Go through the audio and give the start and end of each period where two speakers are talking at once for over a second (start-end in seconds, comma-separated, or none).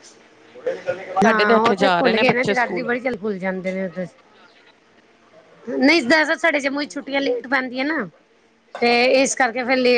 1.3-2.9